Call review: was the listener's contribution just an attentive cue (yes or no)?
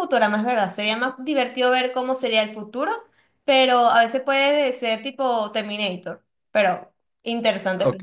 no